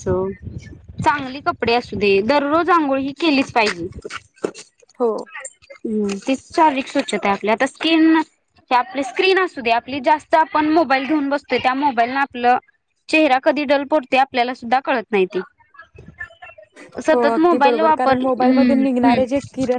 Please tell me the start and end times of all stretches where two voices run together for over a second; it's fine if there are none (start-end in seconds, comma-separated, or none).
17.1-19.2